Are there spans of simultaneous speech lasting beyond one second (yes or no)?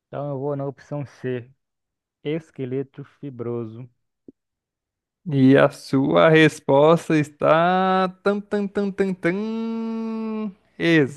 no